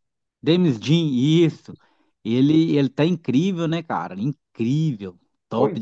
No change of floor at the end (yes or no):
no